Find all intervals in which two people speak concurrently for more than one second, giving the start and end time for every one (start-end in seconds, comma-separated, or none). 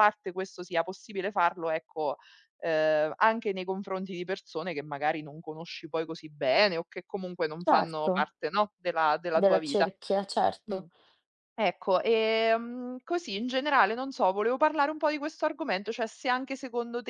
none